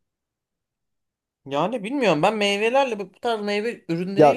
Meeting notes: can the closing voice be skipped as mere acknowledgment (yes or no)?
no